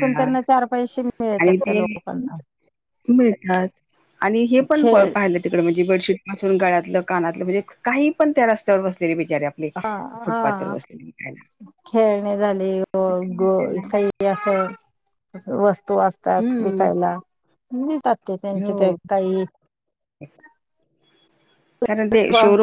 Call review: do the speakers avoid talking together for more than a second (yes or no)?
yes